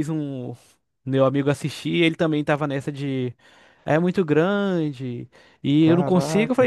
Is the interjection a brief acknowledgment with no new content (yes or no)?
yes